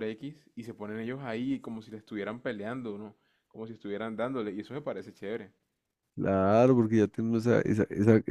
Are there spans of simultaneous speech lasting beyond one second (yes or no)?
no